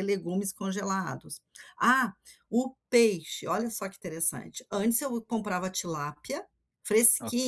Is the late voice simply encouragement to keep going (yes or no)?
yes